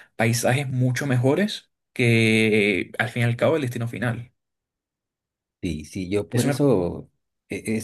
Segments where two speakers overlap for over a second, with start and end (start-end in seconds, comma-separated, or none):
none